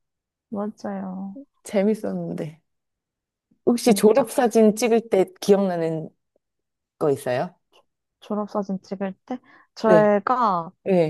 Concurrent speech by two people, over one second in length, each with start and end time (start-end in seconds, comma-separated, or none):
none